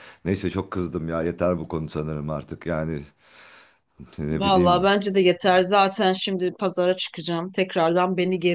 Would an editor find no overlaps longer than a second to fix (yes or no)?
yes